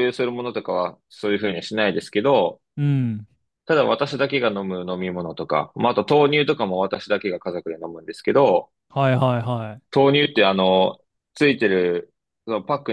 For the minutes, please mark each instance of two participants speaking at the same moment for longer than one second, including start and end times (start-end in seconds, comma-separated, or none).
none